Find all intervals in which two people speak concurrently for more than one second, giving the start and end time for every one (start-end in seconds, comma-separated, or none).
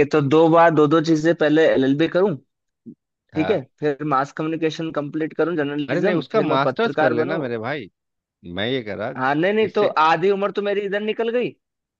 5.9-7.4